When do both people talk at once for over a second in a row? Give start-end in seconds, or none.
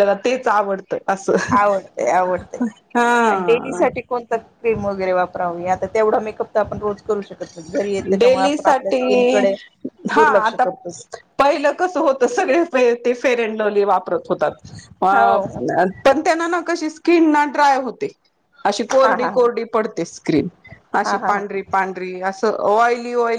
8.2-9.4